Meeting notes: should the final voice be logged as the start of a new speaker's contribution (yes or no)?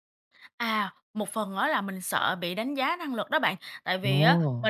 no